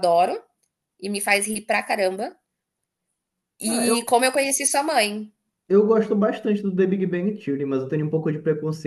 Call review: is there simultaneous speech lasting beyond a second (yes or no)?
no